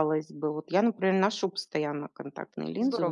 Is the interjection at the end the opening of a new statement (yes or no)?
yes